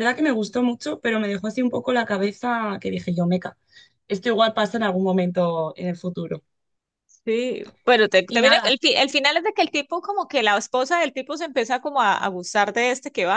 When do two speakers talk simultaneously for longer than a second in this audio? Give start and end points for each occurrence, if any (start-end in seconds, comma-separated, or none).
none